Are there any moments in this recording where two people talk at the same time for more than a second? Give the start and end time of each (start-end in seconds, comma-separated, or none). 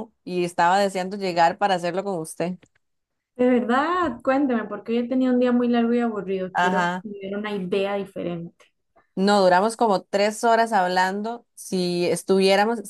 none